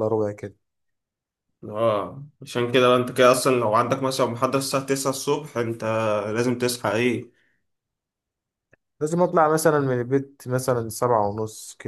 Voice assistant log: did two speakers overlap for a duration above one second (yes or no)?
no